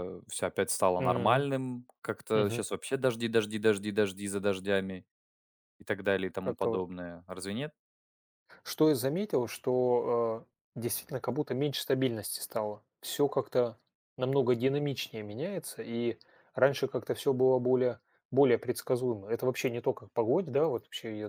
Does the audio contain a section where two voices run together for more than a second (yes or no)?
no